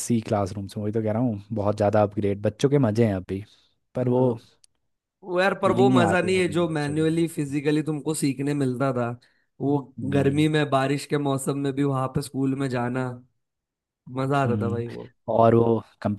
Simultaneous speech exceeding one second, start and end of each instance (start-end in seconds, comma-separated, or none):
5.6-7.1